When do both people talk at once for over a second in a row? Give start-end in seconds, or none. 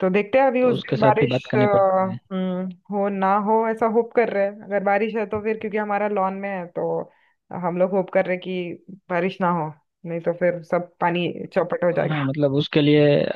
0.6-2.2